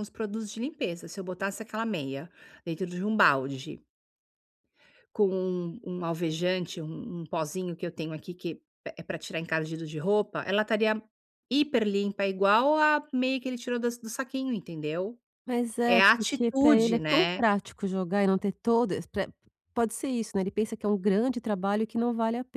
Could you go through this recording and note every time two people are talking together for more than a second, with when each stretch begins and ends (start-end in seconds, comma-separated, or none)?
15.8-17.4